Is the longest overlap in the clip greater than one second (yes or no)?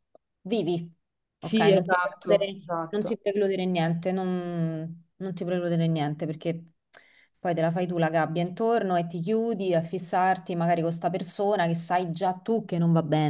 yes